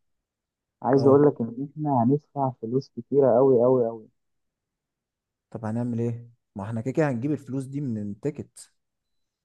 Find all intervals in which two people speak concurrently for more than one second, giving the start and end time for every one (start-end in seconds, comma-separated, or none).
none